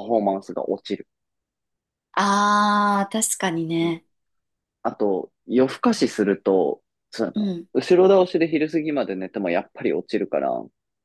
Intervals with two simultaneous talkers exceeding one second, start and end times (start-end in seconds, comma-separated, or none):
none